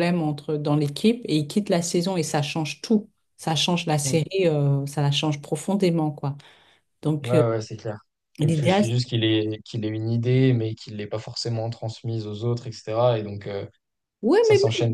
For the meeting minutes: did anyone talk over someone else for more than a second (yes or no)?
no